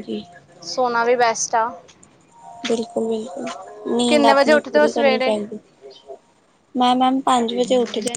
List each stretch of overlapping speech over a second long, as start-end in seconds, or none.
4.1-5.3